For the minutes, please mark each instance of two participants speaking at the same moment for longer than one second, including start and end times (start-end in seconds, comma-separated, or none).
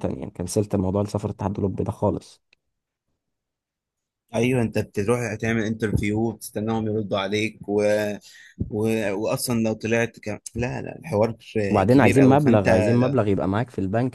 11.9-13.2